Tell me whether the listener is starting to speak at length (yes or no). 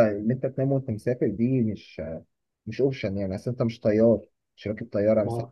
no